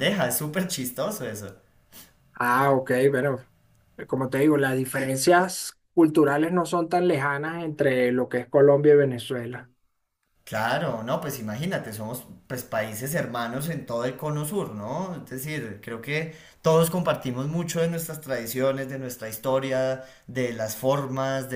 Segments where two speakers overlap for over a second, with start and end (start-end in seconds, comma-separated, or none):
none